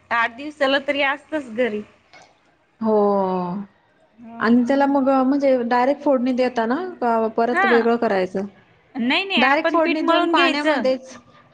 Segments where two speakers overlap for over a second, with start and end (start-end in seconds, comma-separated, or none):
9.4-10.9